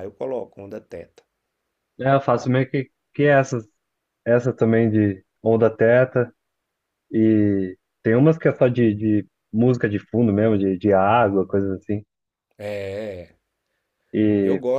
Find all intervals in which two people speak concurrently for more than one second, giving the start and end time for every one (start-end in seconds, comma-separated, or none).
none